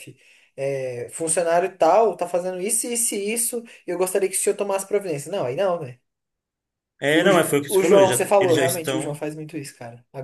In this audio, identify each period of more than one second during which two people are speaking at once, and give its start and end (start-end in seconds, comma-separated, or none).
7.1-9.2